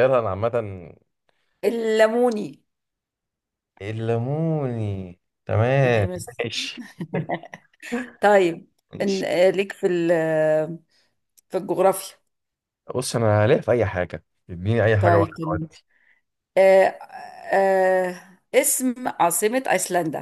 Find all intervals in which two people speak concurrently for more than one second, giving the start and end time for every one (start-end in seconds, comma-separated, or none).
none